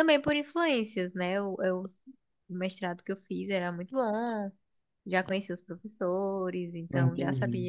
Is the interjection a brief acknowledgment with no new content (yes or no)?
yes